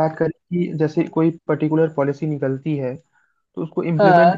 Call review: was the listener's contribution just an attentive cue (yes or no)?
yes